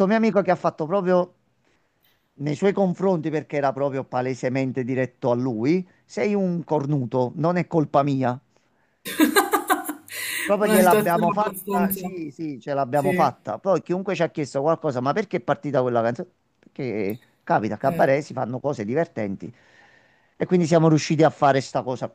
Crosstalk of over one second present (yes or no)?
yes